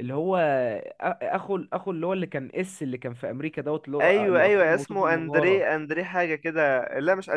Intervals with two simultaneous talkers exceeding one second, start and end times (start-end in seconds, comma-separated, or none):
4.0-5.7